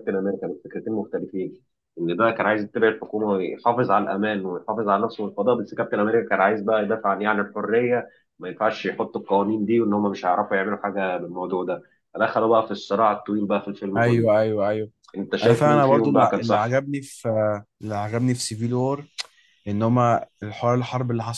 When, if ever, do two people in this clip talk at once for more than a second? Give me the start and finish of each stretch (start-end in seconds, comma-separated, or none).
15.4-16.8